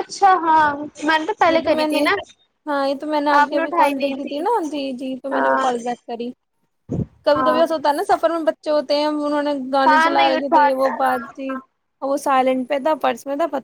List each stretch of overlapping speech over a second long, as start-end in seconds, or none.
9.9-11.6